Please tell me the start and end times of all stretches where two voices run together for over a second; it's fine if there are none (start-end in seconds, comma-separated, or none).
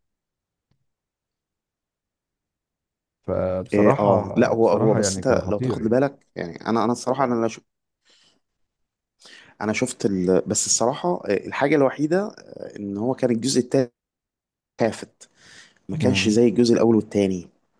3.7-6.0